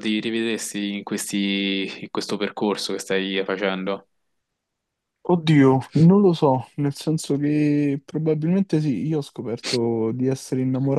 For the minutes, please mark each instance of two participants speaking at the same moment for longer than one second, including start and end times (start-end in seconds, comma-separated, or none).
none